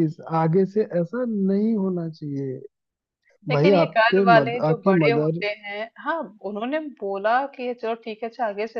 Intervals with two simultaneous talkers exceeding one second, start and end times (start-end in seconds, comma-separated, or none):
3.5-5.4